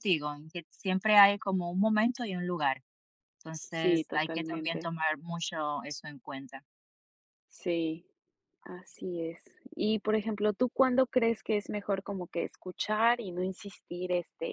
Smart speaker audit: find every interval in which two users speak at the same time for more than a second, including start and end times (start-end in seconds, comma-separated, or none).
3.7-4.9